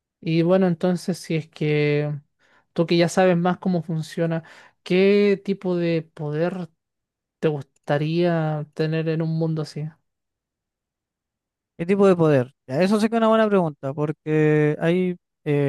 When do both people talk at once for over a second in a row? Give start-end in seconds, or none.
none